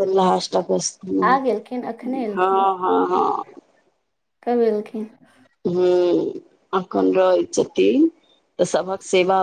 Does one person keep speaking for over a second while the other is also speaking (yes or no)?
yes